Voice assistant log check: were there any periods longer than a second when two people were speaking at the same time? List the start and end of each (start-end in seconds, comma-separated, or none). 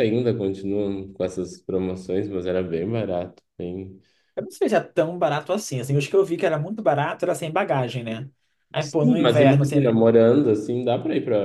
8.8-10.0